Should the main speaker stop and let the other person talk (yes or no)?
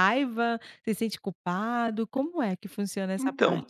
yes